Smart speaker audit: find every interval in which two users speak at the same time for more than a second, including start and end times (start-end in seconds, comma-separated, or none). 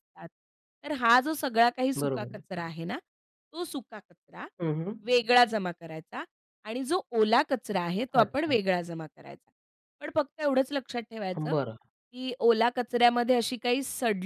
none